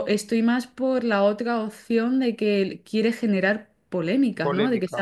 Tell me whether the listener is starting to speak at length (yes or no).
no